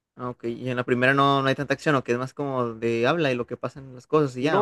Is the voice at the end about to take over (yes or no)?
yes